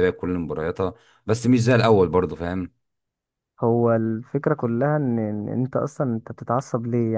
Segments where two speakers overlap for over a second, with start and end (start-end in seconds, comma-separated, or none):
none